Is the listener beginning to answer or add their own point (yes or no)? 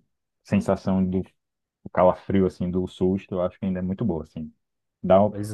no